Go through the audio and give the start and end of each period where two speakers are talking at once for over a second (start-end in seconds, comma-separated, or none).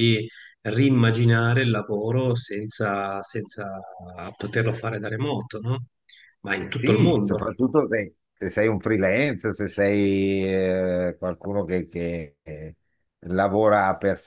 none